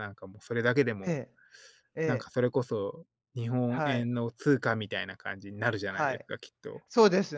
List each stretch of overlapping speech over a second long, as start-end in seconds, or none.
none